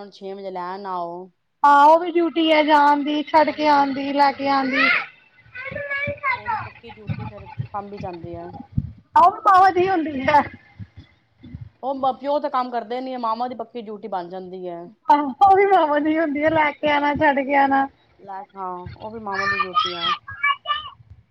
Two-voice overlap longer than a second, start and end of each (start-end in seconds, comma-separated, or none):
3.5-4.9